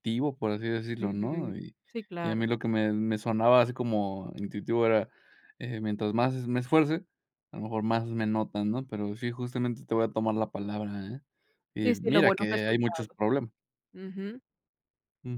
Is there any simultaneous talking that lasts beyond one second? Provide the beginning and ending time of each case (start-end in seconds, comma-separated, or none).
11.8-13.2